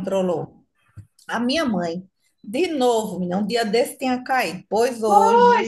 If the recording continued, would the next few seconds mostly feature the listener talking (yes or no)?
yes